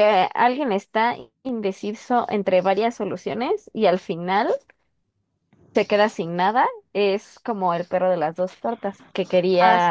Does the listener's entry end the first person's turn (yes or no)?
no